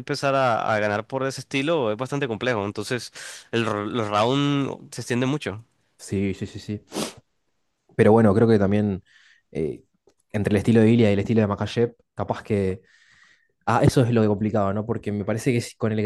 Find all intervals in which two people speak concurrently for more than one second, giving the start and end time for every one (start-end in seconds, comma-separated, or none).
none